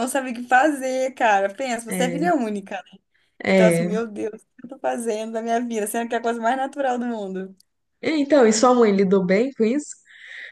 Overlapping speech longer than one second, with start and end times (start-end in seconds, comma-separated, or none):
none